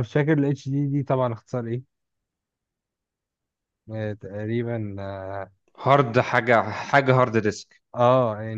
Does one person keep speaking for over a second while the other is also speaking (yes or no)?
no